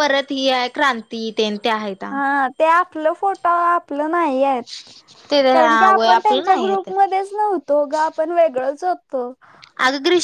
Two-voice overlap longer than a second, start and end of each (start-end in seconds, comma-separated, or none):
5.5-6.9